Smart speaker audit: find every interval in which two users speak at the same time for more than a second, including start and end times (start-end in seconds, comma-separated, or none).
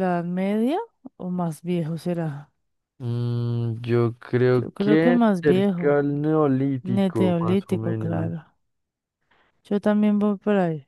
4.6-6.0, 6.8-8.3